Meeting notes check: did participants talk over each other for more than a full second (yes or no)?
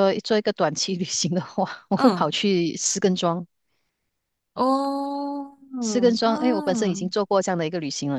yes